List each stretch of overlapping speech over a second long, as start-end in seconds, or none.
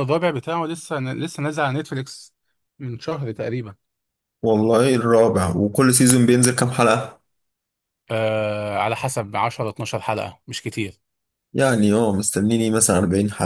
none